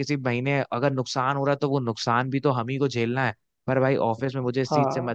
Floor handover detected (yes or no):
no